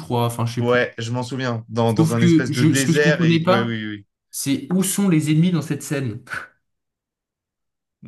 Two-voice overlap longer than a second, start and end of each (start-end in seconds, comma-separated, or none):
2.0-3.8